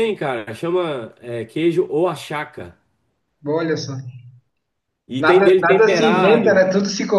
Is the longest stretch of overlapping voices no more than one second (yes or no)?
no